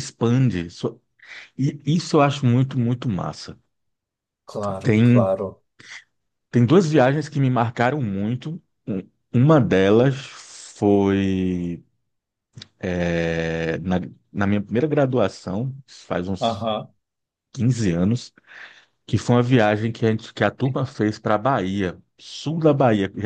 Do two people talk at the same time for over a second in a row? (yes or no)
no